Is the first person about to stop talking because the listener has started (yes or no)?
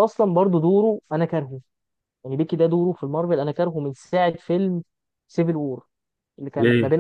no